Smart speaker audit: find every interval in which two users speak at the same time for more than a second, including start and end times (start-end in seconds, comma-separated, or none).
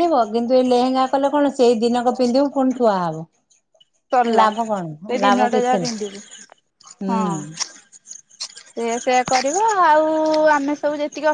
4.4-6.2